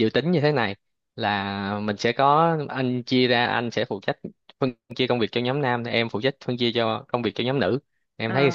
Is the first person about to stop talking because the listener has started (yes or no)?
yes